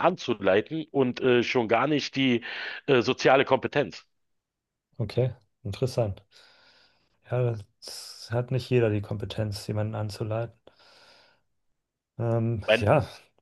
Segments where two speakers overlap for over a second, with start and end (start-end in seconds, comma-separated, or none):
none